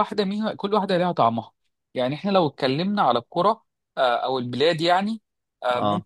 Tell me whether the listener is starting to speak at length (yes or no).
no